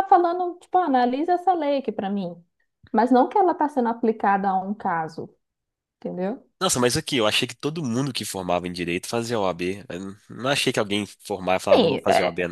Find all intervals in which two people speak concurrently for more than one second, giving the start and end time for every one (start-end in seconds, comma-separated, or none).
none